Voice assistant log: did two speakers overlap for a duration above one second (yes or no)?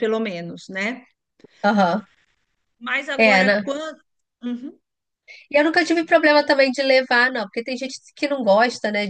no